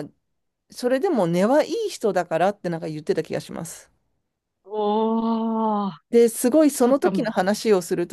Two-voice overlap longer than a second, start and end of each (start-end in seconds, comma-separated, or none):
none